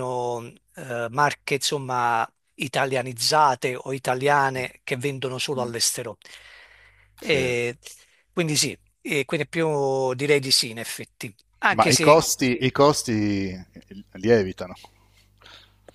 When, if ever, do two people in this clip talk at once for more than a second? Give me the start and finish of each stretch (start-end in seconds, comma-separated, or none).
none